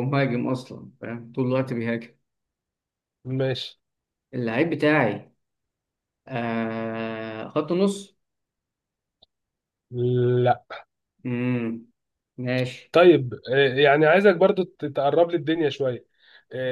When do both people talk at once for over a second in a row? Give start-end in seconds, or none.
none